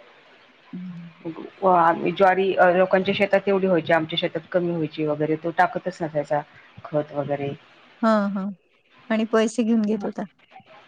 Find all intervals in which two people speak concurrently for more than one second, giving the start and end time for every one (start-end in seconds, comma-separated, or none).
none